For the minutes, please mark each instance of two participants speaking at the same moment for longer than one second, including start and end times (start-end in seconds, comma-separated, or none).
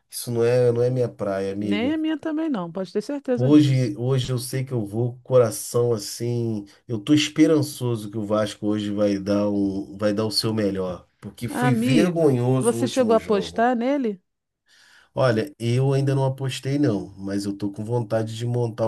11.5-13.6